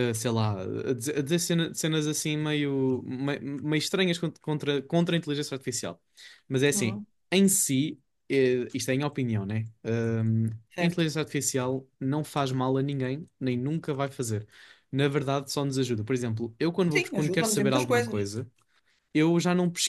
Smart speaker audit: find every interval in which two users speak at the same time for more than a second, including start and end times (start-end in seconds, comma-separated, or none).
16.9-18.3